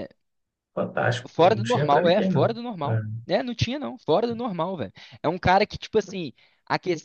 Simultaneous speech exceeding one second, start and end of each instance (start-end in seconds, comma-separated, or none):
1.3-2.5